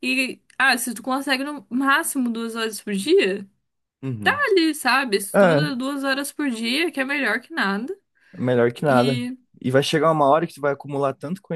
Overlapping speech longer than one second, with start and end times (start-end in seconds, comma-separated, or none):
none